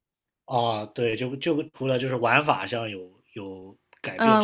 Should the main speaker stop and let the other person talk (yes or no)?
yes